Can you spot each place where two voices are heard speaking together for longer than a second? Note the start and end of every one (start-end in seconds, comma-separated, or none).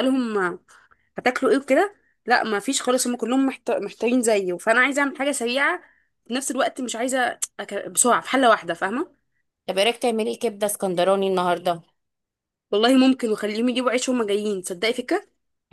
none